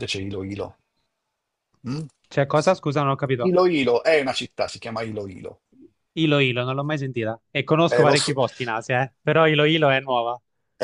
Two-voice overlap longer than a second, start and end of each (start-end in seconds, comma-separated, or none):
none